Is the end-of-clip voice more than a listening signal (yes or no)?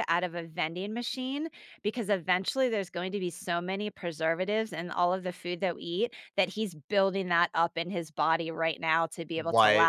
no